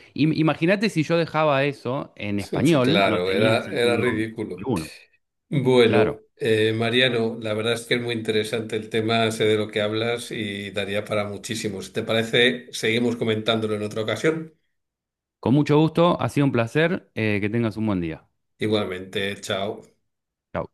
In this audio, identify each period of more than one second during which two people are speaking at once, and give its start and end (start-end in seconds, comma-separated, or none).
2.8-4.7